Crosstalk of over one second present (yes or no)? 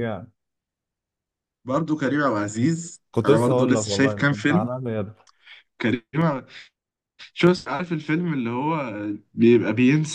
yes